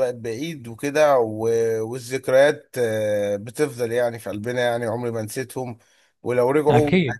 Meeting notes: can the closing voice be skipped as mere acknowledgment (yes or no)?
yes